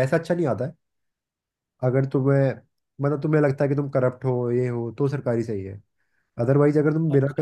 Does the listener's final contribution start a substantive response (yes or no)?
no